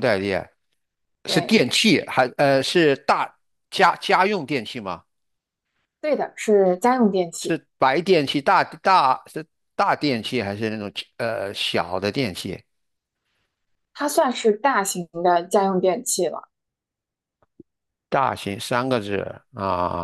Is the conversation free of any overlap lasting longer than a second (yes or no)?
yes